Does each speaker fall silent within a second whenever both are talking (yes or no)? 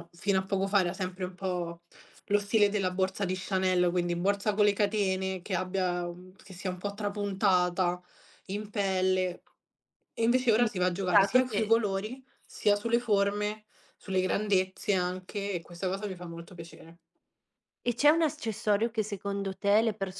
no